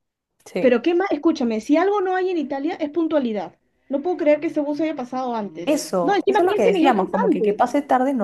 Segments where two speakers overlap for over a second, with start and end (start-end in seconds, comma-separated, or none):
5.7-7.6